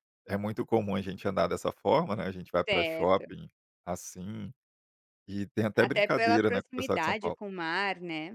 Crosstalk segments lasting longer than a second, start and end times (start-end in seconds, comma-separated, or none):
5.8-7.4